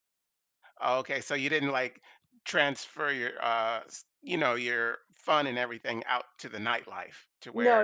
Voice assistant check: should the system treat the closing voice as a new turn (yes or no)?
yes